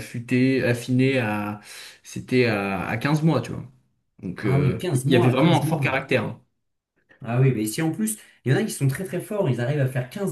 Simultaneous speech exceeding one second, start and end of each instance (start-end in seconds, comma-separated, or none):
4.4-6.0